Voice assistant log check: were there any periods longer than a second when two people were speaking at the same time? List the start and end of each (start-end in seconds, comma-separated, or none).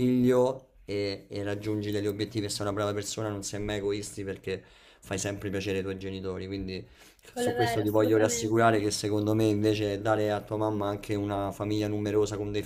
7.3-8.8